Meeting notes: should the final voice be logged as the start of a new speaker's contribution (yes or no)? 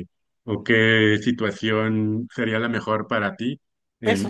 yes